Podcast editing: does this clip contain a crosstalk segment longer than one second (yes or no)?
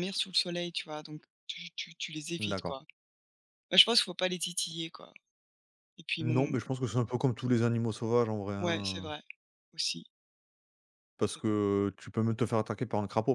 no